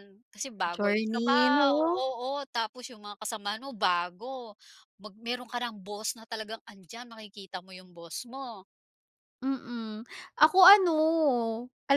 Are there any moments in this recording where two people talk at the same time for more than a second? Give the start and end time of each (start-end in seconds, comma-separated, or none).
0.7-2.0